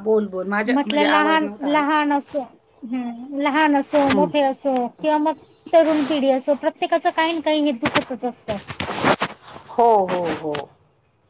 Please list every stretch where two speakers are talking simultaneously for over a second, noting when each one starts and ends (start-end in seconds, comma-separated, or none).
0.8-2.0